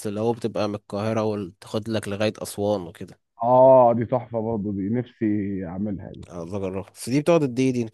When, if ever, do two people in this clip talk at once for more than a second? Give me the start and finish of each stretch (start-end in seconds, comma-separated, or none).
none